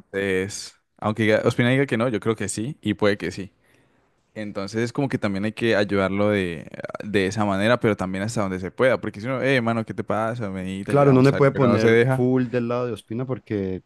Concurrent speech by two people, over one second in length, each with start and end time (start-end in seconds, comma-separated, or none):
10.8-12.2